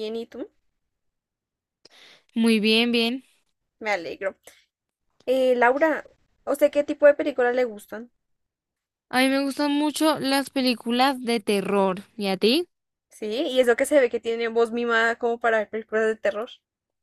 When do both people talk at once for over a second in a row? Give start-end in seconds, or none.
none